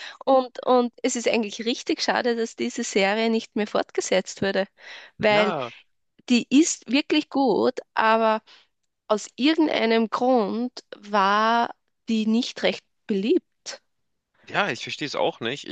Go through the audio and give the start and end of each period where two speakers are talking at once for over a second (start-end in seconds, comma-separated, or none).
none